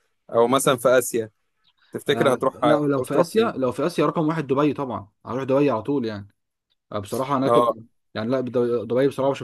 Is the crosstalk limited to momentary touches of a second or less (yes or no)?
no